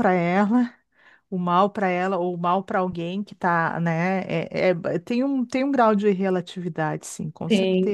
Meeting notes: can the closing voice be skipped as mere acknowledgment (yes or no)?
no